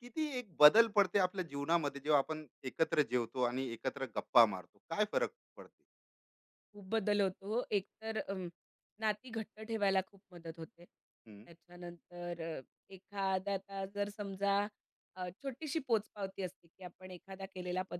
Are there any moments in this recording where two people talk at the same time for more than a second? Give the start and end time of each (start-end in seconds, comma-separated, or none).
none